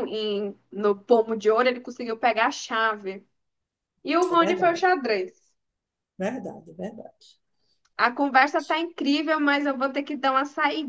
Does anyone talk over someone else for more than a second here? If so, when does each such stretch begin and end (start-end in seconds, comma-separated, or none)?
none